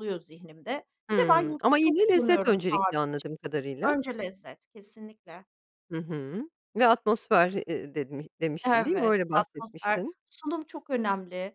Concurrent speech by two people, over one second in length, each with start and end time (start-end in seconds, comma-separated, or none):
1.1-3.0, 8.6-10.2